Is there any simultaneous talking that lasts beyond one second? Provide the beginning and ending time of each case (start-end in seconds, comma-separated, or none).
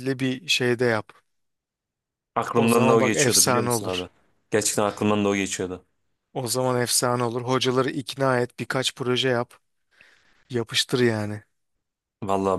2.5-4.0